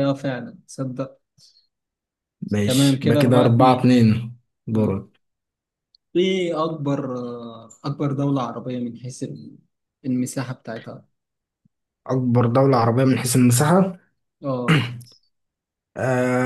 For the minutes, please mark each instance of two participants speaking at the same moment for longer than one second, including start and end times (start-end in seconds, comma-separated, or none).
2.6-4.0